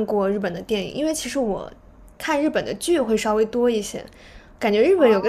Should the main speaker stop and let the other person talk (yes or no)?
no